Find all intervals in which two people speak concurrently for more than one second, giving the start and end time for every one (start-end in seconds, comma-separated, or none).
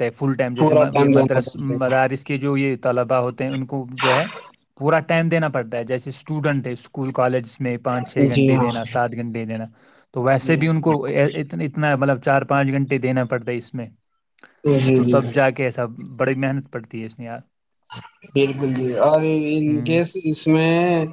0.6-2.1